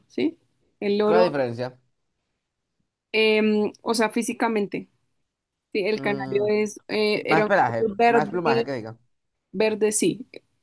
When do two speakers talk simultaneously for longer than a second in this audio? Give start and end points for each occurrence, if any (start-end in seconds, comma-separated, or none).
7.2-8.7